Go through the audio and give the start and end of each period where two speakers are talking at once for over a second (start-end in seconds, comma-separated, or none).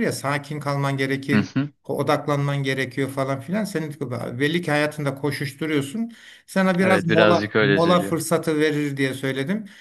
6.8-8.2